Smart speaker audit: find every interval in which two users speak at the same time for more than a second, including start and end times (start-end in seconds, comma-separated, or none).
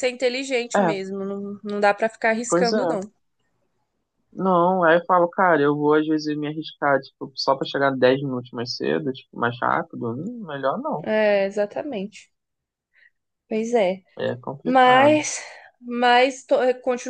none